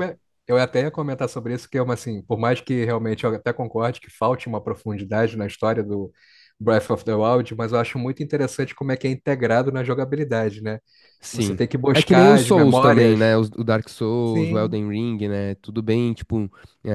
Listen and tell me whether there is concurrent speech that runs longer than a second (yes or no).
yes